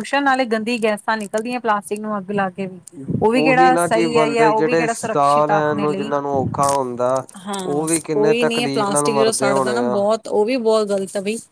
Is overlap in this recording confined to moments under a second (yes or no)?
no